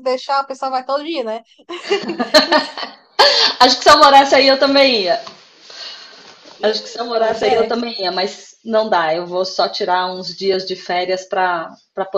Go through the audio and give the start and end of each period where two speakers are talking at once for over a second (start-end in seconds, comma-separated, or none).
none